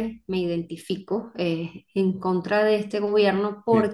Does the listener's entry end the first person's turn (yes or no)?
no